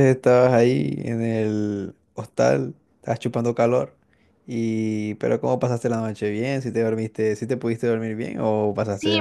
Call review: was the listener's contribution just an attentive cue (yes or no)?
no